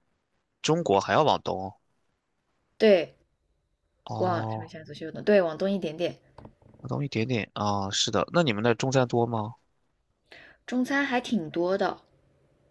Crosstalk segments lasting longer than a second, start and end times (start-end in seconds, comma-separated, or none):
none